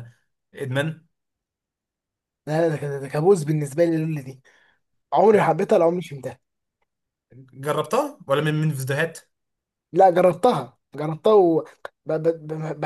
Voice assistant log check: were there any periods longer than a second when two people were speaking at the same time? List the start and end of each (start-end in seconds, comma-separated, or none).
none